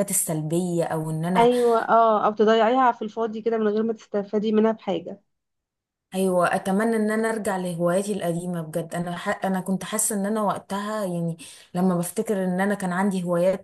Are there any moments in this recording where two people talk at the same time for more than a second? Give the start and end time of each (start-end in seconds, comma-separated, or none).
none